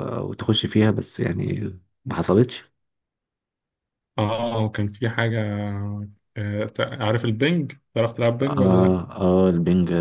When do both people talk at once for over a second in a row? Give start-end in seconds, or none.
none